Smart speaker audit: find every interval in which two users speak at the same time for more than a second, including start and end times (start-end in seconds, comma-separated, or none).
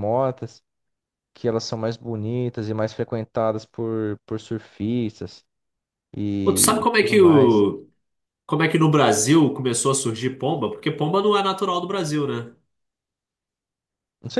6.4-7.6